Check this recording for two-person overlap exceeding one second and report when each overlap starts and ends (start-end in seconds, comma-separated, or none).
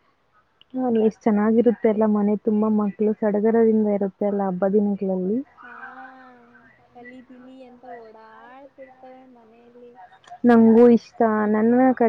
none